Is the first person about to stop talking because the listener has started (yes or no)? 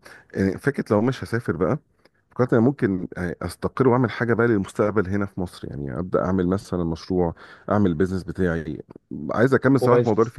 no